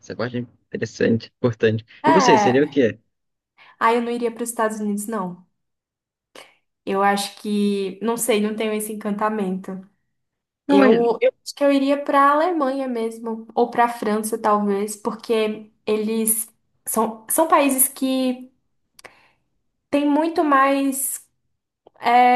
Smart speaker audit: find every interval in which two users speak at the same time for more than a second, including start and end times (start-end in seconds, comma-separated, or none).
none